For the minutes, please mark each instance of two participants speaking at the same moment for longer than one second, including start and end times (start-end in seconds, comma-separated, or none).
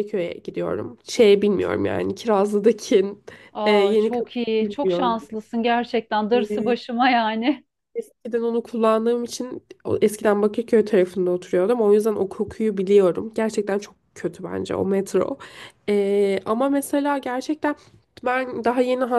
3.6-5.2